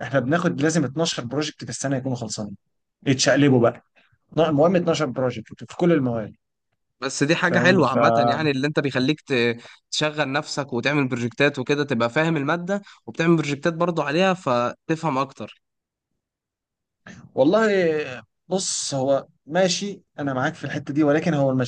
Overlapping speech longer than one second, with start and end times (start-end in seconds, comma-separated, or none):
none